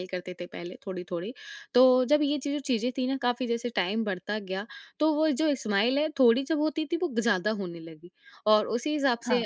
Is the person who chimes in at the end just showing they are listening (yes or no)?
yes